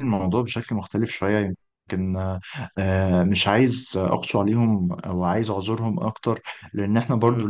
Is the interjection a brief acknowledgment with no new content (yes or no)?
yes